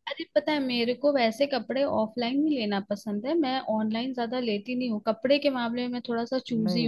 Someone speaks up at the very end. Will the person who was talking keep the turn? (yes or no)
no